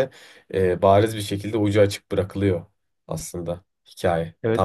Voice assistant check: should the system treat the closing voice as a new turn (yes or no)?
yes